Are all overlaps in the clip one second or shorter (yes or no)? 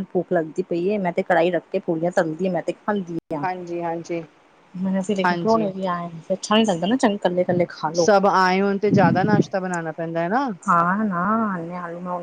yes